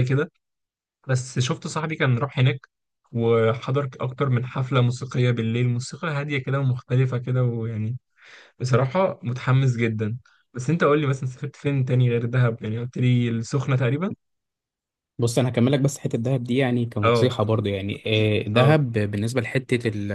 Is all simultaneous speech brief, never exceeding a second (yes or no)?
yes